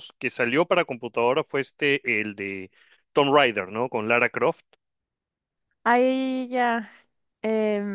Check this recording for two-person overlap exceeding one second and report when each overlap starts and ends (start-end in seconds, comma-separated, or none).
none